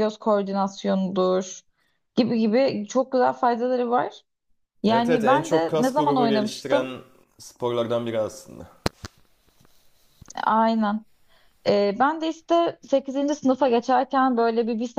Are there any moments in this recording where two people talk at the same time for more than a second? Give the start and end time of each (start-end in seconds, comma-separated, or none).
4.9-7.0